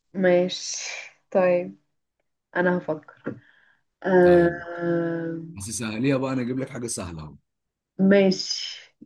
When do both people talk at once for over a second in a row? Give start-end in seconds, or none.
none